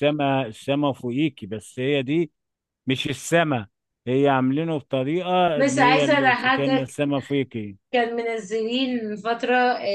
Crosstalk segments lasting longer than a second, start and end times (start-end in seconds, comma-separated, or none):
5.5-6.9